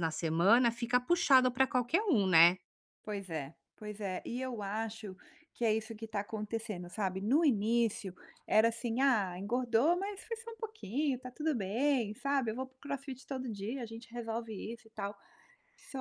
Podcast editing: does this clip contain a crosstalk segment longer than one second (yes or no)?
no